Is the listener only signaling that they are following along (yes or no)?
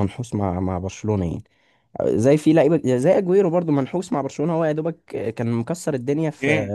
yes